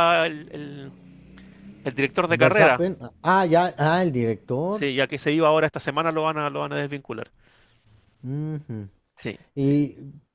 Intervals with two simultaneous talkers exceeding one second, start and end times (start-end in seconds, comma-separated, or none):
none